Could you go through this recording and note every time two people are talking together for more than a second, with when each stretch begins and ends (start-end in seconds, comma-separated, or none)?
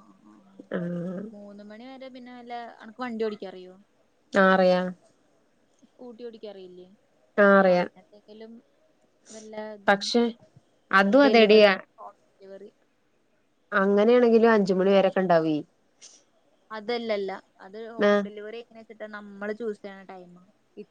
none